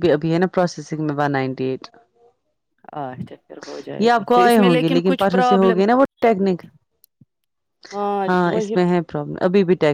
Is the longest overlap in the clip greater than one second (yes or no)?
yes